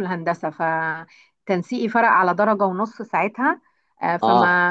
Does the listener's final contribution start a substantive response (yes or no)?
no